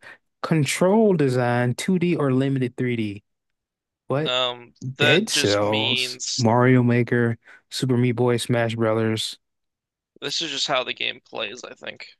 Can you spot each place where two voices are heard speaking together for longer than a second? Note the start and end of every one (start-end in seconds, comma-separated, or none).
5.0-6.5